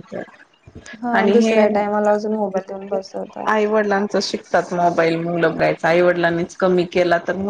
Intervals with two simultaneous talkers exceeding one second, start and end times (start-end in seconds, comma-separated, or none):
none